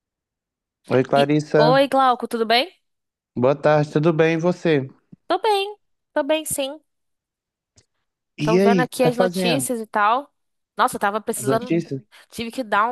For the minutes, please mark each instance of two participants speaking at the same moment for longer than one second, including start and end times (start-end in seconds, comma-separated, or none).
8.4-9.7